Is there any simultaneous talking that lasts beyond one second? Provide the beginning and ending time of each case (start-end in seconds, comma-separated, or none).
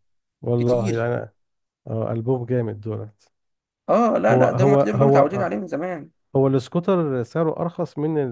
4.2-5.6